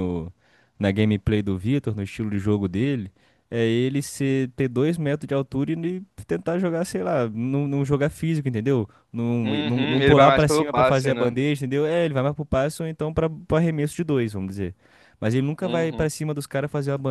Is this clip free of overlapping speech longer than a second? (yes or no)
no